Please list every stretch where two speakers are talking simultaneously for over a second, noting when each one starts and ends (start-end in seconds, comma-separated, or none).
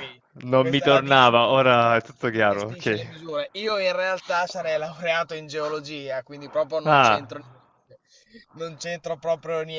0.6-3.1